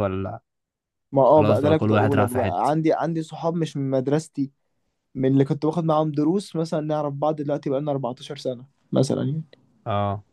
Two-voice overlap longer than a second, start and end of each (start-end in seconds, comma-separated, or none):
1.4-2.9